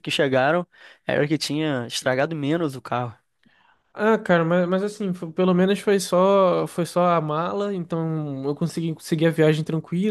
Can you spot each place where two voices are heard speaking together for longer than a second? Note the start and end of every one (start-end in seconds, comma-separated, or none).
none